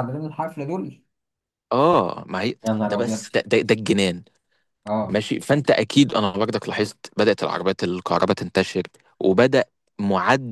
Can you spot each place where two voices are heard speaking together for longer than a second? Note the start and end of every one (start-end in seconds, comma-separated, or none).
none